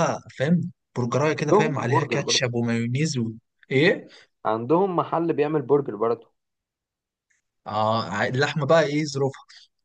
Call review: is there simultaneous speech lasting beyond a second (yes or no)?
yes